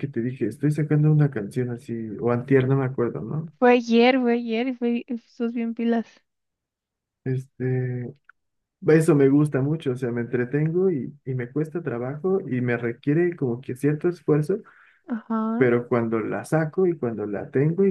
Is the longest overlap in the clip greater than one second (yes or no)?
no